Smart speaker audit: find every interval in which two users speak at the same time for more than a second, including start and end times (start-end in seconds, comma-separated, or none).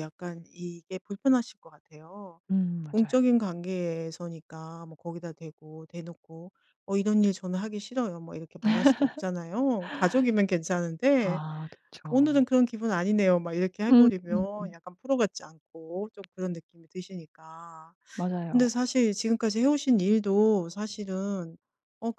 none